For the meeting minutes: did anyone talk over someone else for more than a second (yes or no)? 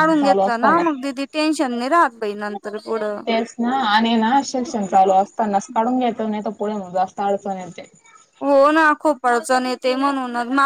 no